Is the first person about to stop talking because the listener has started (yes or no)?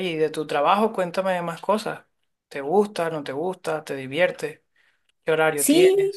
yes